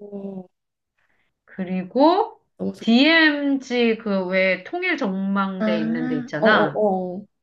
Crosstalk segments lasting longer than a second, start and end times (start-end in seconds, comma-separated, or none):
5.6-6.8